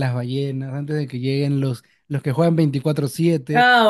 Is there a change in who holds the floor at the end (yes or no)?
yes